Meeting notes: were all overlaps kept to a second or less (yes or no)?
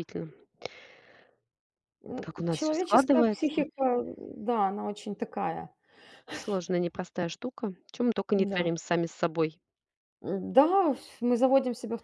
no